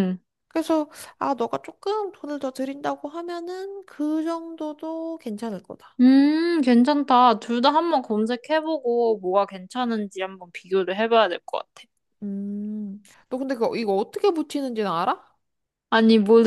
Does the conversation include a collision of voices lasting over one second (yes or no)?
no